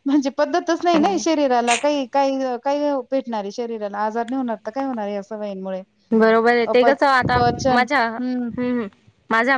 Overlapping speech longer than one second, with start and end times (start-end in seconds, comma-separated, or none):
none